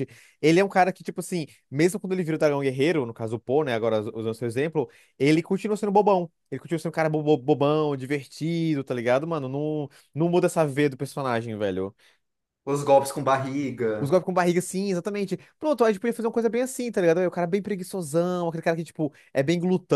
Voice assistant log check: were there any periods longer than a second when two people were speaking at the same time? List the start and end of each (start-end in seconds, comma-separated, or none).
none